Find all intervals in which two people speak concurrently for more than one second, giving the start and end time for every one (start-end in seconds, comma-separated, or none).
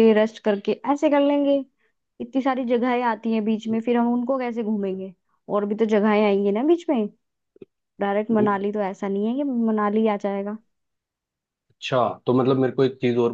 none